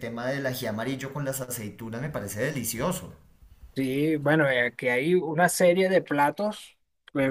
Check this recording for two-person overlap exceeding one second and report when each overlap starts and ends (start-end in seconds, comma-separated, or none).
none